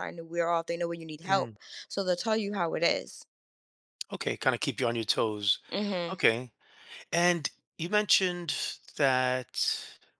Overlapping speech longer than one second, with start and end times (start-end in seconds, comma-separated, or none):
none